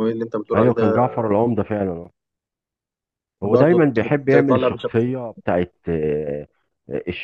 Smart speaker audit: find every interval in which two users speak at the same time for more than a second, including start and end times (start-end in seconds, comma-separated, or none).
none